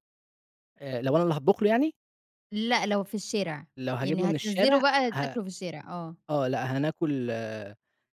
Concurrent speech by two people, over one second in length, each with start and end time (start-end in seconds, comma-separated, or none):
4.0-5.4